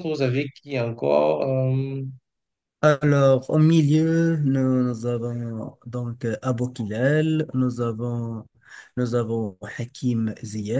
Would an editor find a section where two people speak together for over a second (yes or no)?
no